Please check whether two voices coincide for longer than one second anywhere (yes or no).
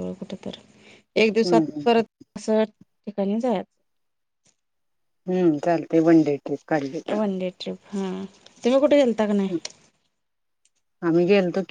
no